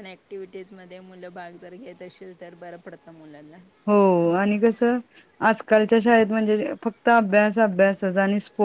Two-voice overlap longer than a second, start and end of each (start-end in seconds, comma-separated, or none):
none